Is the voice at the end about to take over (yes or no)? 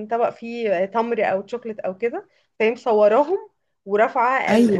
no